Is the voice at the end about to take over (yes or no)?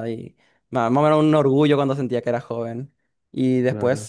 no